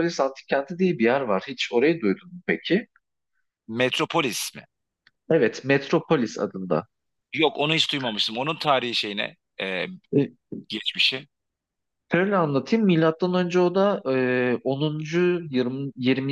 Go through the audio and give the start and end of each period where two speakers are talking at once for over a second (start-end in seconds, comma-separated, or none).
none